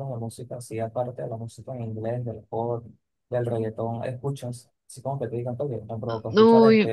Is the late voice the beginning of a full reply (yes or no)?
yes